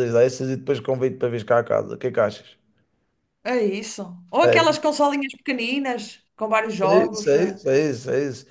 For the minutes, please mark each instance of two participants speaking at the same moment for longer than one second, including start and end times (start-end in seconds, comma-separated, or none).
none